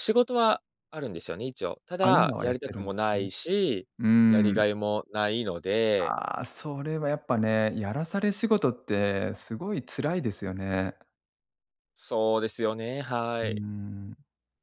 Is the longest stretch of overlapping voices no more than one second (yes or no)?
no